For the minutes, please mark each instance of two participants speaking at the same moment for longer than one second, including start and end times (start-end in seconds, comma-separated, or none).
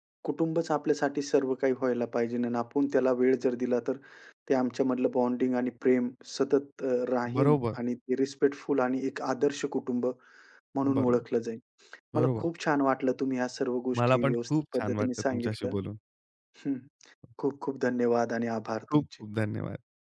14.0-15.7